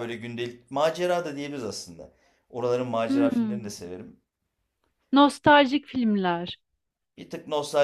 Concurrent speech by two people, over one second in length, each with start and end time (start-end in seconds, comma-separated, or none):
none